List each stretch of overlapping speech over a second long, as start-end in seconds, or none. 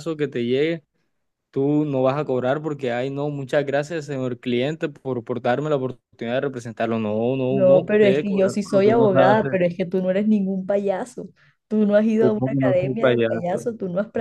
7.5-9.6, 12.2-13.7